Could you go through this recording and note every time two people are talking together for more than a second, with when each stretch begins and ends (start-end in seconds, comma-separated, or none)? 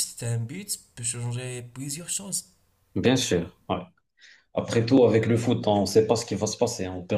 none